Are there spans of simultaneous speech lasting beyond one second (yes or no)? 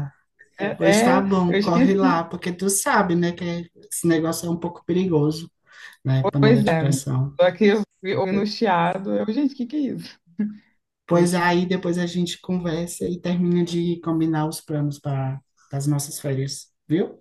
yes